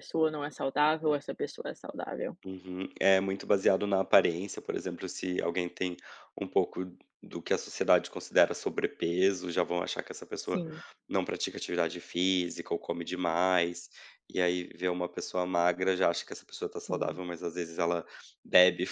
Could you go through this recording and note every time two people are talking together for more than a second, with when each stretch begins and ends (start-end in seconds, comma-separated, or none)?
none